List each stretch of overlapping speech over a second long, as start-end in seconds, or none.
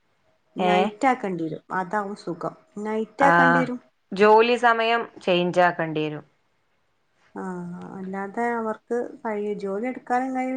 none